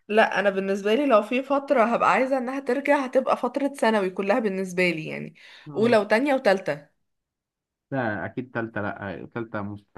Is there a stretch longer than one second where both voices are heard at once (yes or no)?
no